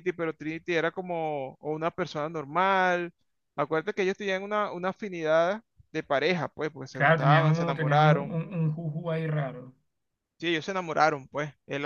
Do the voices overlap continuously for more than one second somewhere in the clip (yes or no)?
yes